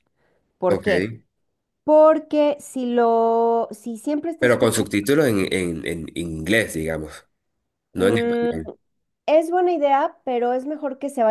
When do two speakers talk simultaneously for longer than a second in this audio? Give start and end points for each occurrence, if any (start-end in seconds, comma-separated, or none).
none